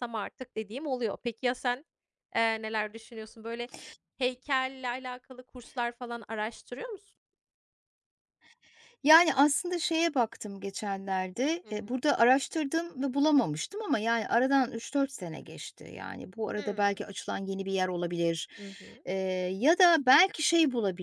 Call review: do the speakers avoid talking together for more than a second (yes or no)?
yes